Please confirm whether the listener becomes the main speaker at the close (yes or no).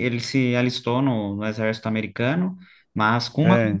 no